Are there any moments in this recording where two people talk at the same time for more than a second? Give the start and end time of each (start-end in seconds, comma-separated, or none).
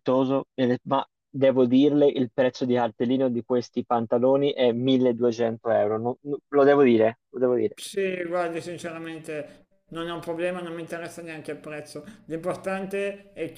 none